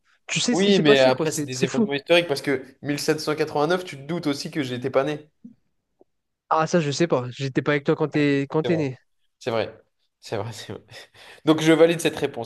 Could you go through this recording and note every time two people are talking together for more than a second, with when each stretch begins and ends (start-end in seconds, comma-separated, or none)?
0.5-1.9